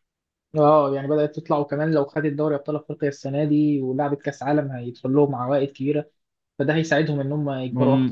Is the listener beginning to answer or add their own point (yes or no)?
yes